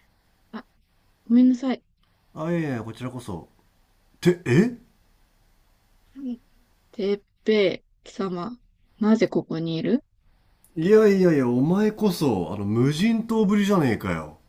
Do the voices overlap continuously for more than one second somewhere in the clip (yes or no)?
no